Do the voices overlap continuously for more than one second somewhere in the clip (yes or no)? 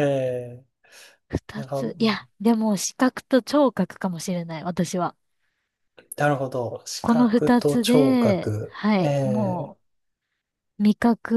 yes